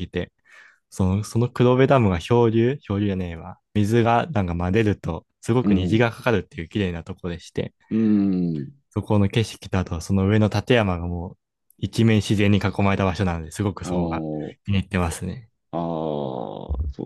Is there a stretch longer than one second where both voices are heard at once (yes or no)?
no